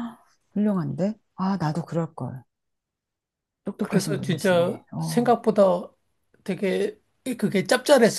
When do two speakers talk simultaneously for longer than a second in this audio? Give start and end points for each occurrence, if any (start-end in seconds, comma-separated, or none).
3.8-5.3